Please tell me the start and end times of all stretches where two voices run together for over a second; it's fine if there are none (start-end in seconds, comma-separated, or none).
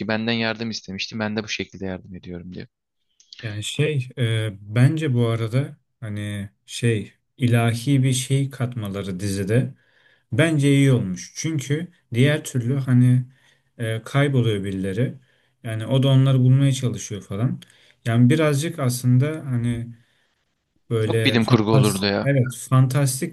21.0-22.3